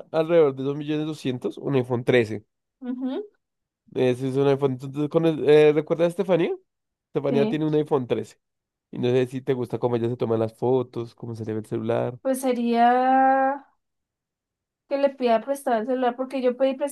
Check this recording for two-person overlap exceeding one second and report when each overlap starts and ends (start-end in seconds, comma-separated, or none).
none